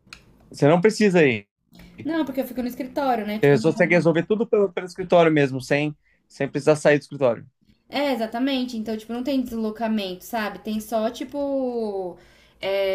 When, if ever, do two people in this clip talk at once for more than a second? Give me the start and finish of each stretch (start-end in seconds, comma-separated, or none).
none